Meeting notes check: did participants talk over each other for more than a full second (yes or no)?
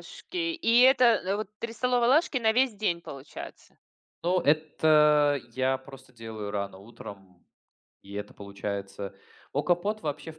no